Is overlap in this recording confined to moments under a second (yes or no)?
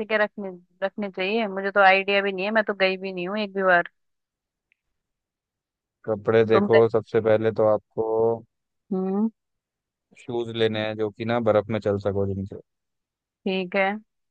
yes